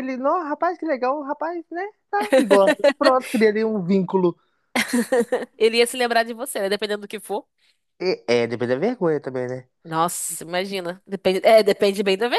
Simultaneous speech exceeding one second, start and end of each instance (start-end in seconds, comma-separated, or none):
none